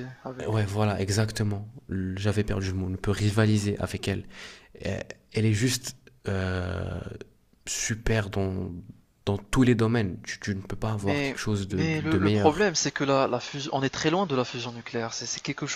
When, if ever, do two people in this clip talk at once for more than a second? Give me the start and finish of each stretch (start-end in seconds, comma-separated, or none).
11.0-12.7